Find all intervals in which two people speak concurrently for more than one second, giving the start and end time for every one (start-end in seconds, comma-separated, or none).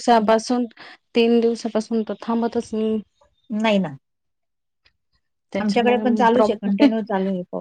5.6-7.1